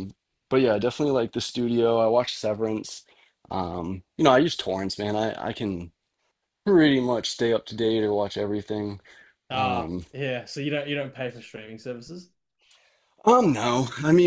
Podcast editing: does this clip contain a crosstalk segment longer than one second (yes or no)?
no